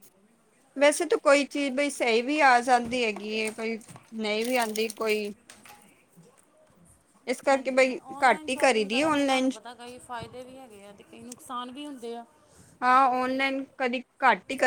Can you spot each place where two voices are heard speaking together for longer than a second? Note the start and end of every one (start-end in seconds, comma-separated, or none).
7.5-9.5